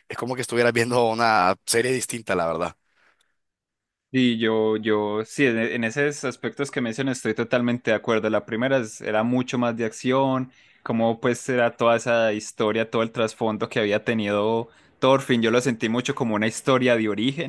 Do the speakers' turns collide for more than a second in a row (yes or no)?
no